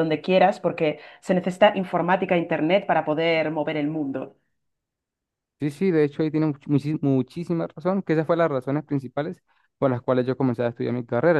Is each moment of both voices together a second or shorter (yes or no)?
yes